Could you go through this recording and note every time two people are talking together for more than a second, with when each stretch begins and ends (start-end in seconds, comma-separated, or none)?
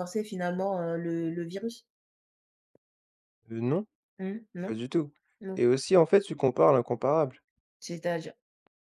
none